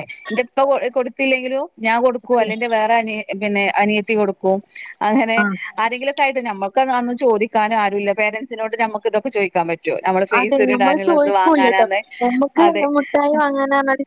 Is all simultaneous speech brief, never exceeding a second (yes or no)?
no